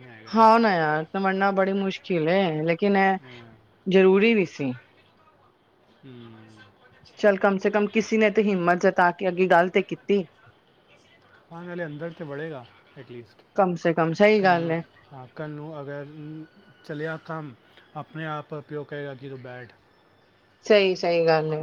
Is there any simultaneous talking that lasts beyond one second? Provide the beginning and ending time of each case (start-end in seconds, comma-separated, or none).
none